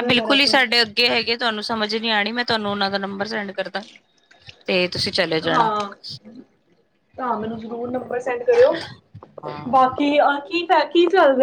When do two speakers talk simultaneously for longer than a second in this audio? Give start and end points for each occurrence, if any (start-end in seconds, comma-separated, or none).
none